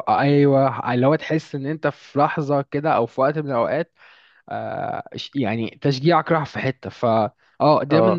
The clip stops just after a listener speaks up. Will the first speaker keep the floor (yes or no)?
yes